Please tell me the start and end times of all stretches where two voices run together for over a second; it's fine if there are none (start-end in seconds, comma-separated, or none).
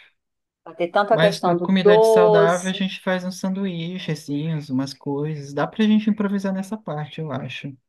1.1-2.8